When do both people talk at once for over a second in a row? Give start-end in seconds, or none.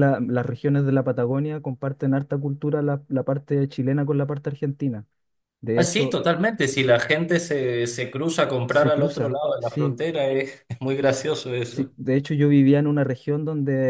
8.7-10.0